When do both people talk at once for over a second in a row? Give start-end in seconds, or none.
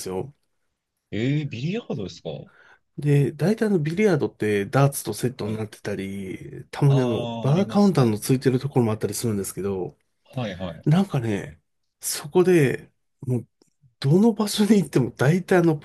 6.9-8.1